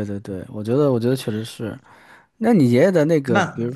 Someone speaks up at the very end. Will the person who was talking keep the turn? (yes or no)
yes